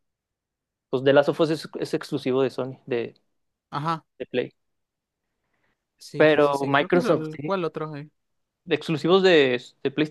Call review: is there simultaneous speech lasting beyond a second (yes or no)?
yes